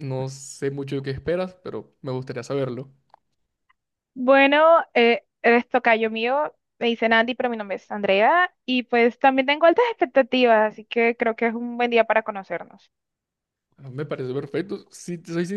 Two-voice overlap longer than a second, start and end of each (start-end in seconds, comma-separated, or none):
none